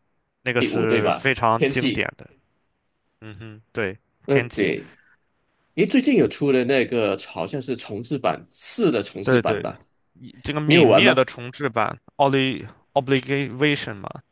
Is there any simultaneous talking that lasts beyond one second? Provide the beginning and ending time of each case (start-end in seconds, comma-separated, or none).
0.6-2.1